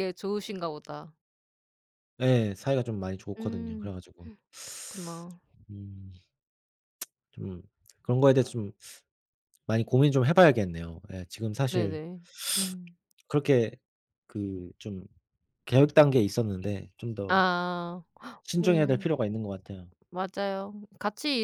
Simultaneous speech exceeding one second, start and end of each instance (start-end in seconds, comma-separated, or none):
none